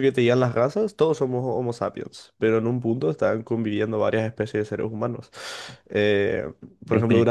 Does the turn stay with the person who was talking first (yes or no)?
yes